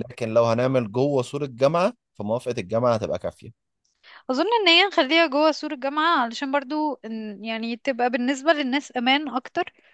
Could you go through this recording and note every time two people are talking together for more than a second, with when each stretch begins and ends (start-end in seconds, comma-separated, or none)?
none